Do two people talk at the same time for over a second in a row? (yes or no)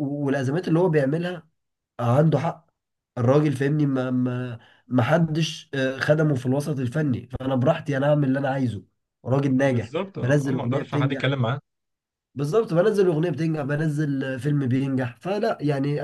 yes